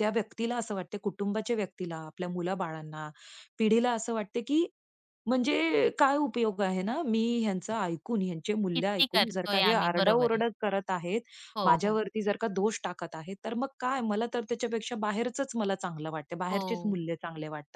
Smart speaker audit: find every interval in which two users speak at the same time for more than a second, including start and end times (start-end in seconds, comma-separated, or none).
8.8-10.4